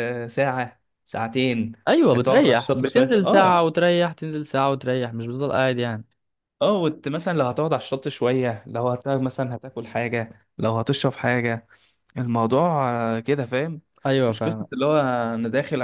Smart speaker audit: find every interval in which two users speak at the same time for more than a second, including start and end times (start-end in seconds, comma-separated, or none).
2.1-3.6